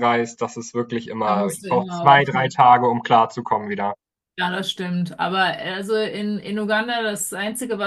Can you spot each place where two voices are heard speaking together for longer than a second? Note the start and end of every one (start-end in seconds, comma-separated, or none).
1.2-2.6